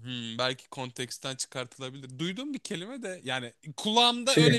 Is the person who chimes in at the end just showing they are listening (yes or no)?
yes